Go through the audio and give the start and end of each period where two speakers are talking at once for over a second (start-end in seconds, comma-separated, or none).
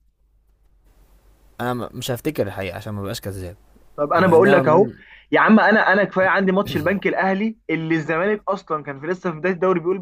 none